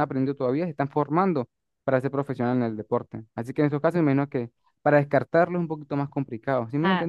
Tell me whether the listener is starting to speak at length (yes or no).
yes